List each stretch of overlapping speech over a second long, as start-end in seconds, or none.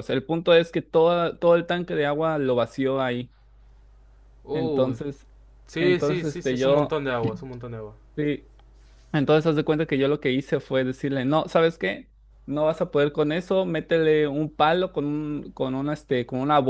5.8-7.0